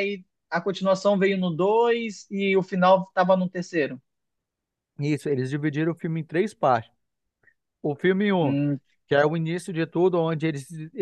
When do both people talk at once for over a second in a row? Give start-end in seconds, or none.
none